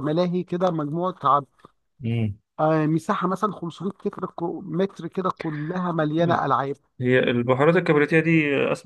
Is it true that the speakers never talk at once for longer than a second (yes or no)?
yes